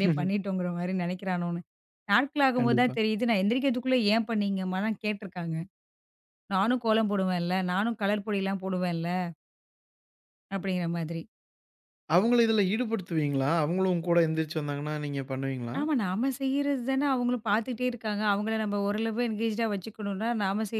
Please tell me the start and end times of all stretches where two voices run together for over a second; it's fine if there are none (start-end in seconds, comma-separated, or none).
none